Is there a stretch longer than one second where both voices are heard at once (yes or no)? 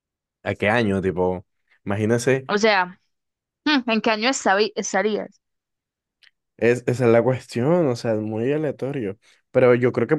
no